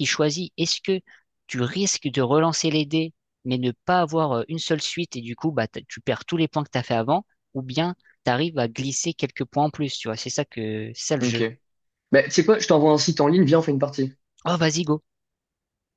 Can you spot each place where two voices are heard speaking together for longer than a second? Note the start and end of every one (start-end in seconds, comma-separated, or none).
none